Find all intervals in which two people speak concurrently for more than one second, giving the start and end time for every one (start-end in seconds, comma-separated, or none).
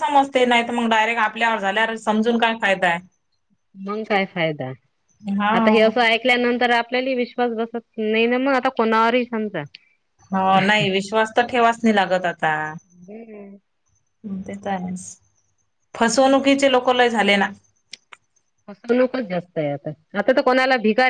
none